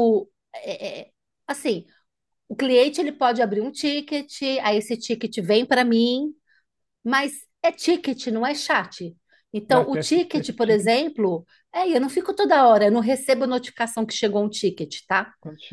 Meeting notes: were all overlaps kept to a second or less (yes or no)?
no